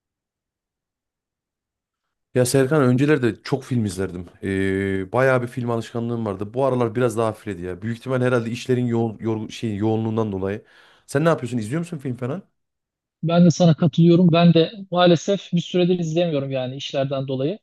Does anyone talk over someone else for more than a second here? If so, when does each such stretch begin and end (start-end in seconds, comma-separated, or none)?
none